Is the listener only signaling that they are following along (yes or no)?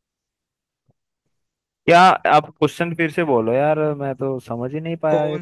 no